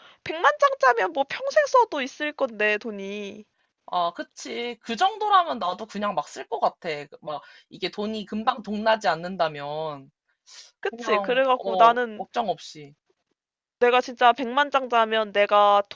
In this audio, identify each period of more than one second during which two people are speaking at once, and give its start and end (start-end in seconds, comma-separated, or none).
10.9-12.3